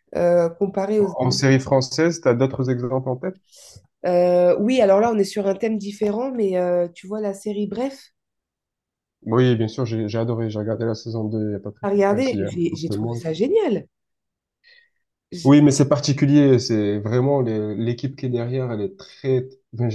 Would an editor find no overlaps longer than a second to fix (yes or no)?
no